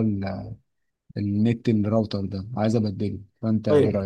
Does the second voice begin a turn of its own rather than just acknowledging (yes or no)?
yes